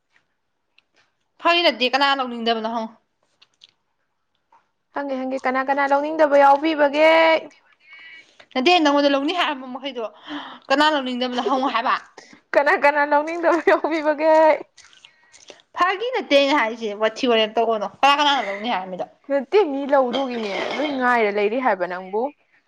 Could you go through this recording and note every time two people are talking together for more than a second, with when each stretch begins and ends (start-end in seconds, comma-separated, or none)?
none